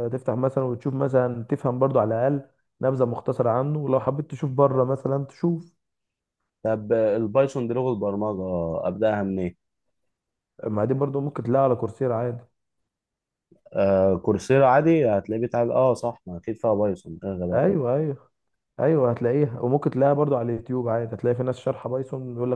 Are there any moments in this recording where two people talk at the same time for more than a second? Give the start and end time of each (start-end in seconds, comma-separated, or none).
none